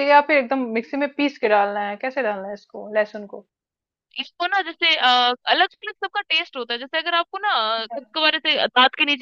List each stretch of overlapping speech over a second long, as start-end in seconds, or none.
none